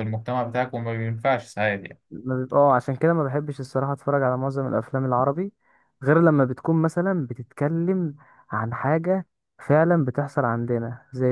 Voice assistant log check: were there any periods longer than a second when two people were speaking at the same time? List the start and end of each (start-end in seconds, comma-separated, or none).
none